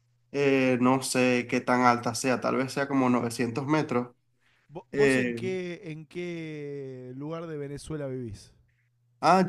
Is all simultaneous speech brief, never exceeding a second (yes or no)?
yes